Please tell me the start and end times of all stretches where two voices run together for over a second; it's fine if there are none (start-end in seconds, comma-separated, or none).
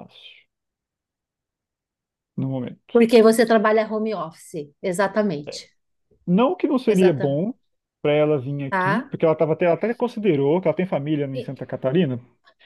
none